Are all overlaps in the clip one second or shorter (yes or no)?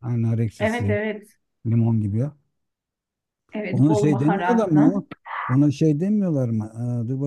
no